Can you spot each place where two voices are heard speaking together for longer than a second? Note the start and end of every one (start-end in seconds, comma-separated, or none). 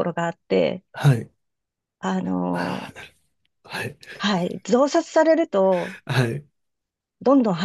none